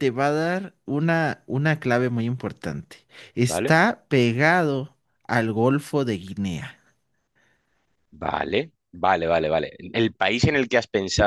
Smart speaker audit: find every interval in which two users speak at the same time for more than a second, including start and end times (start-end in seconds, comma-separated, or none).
none